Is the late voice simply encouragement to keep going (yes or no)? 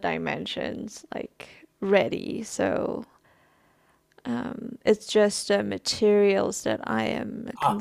no